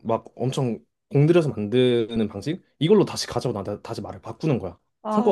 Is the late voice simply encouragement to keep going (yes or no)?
no